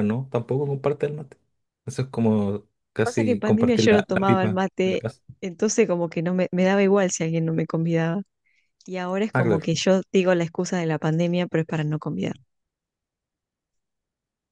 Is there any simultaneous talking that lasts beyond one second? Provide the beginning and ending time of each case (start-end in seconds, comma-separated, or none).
3.0-5.0